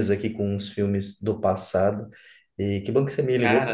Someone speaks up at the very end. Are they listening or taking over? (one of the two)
listening